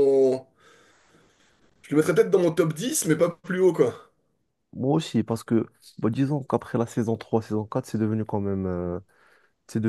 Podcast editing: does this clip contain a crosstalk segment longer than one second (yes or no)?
no